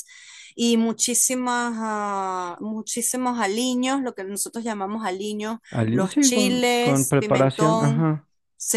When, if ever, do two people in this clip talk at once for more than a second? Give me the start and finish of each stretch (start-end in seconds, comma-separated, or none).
5.7-8.1